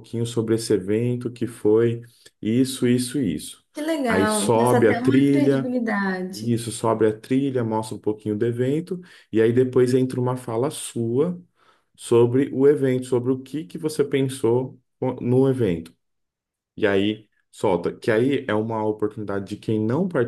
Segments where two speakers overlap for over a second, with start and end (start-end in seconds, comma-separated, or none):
4.1-5.7